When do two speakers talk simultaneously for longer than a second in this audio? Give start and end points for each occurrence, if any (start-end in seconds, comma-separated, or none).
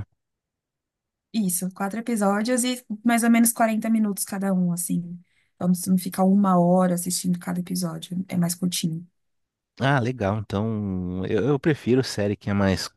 none